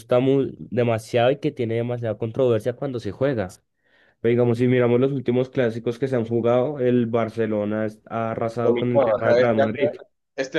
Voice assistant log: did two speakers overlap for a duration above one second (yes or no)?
yes